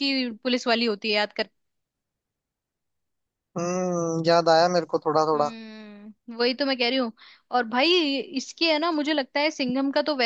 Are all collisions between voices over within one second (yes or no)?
yes